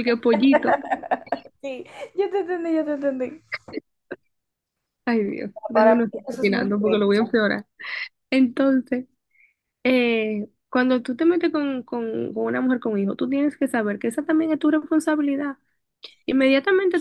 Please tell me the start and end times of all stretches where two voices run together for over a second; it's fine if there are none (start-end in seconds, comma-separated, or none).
5.7-7.1